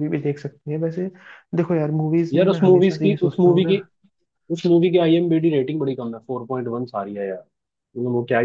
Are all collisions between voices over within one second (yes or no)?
no